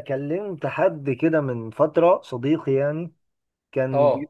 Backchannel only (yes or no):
yes